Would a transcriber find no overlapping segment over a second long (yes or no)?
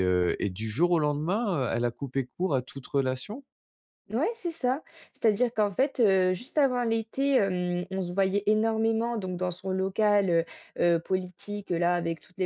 yes